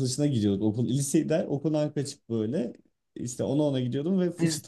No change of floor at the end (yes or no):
yes